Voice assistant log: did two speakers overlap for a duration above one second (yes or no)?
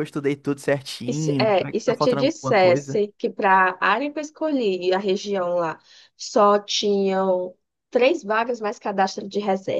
yes